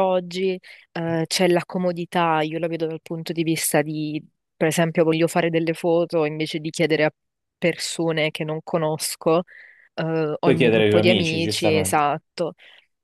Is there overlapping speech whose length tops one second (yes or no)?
yes